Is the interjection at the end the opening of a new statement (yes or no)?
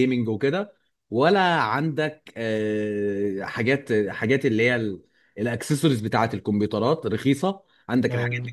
no